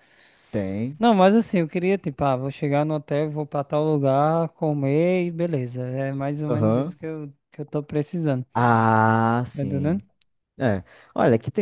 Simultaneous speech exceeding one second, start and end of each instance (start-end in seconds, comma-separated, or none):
none